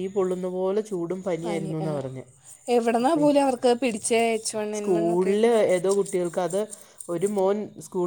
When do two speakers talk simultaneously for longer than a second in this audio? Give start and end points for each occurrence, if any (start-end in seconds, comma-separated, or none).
none